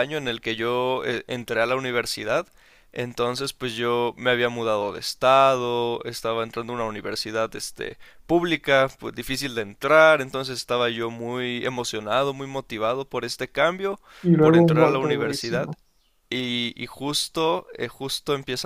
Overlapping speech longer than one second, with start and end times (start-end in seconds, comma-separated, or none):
14.4-15.7